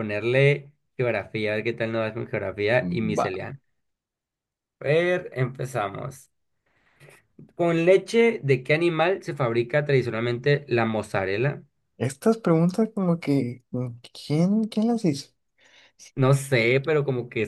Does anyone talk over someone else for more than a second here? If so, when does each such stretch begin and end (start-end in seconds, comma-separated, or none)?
none